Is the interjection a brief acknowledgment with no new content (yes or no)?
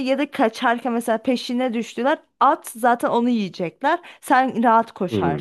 no